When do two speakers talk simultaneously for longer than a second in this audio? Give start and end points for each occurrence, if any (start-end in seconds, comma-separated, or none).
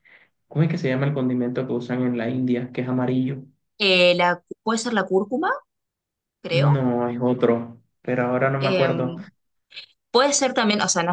none